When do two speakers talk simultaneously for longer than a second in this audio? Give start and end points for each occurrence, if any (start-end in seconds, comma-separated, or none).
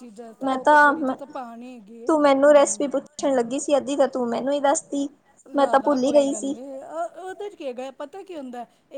none